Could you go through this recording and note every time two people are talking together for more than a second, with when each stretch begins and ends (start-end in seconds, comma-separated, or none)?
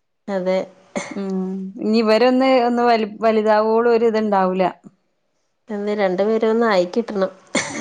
none